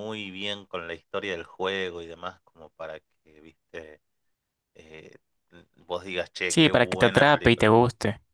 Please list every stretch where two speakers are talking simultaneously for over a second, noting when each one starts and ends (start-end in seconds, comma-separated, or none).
6.5-7.7